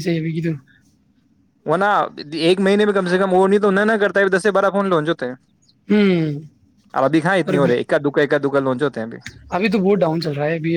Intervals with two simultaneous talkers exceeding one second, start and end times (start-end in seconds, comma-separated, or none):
none